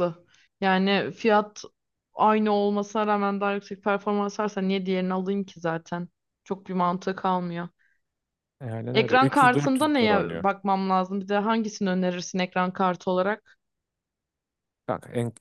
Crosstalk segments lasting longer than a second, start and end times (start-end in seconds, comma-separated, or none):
8.9-10.4